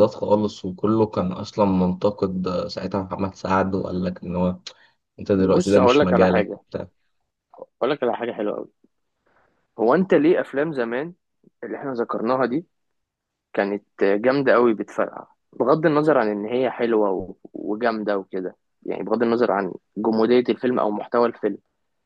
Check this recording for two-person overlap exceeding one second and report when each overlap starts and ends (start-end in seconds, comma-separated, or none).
5.3-6.6